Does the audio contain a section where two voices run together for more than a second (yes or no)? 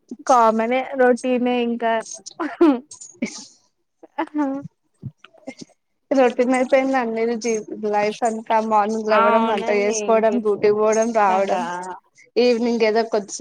yes